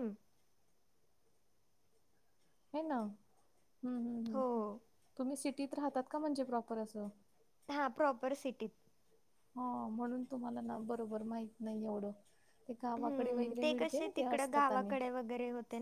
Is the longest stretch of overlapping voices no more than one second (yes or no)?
no